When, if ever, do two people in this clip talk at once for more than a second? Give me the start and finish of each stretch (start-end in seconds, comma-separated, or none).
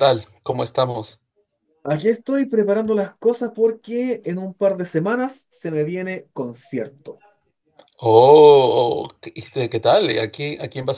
none